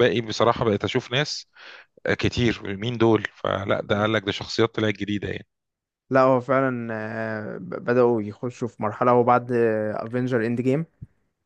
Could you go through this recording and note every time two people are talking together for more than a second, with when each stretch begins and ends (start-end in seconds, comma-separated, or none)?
none